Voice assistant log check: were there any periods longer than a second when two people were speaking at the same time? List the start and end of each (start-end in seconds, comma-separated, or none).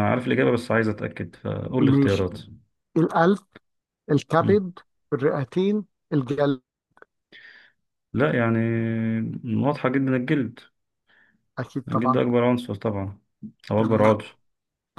none